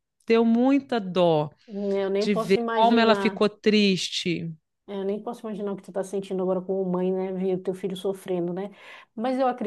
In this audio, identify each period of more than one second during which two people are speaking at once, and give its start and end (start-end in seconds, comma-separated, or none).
2.2-3.4